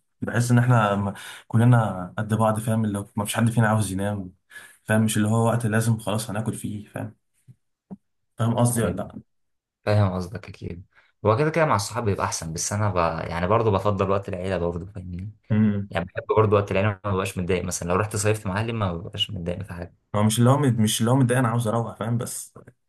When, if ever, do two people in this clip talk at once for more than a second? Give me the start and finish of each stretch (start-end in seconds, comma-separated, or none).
none